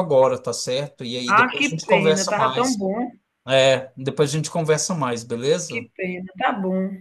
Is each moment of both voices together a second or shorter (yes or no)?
no